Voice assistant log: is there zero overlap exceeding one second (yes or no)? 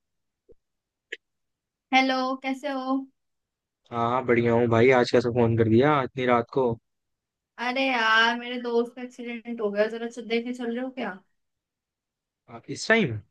yes